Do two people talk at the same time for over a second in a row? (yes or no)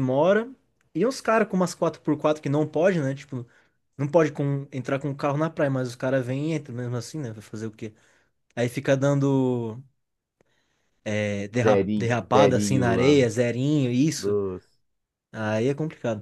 yes